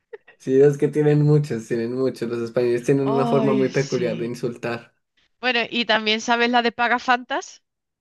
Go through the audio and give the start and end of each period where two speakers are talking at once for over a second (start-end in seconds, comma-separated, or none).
3.0-4.3